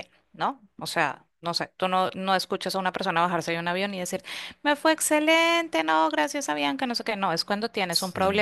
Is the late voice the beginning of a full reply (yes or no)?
no